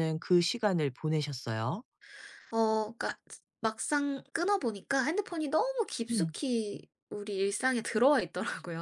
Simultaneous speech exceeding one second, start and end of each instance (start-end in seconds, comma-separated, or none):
none